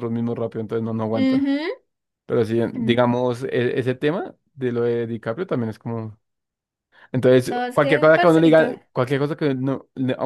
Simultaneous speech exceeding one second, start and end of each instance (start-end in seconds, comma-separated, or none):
7.5-8.7